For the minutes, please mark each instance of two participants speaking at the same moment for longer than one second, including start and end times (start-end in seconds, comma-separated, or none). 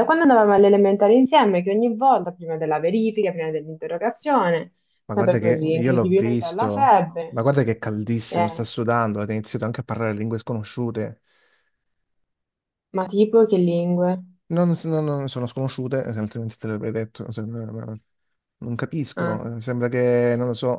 5.1-7.4